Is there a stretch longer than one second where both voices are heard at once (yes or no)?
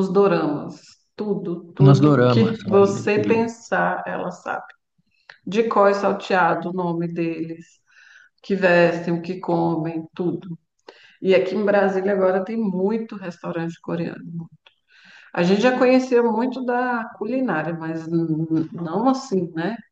yes